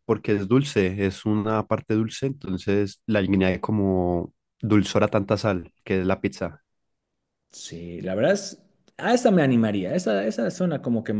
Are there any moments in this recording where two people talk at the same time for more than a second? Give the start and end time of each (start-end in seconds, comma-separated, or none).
none